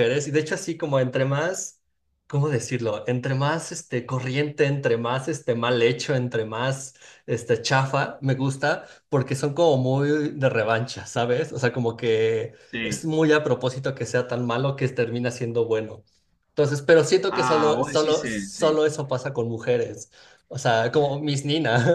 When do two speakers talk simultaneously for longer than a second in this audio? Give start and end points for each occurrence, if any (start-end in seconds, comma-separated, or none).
17.3-18.8